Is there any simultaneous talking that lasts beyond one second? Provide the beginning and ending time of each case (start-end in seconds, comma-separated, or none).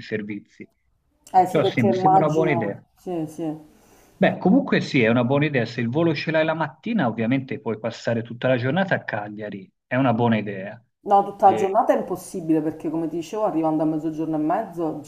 1.3-2.8